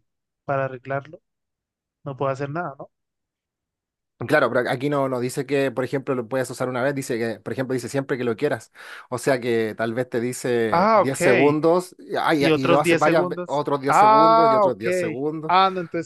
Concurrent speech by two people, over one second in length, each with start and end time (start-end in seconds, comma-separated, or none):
12.4-14.8